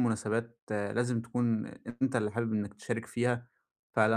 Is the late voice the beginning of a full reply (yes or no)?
no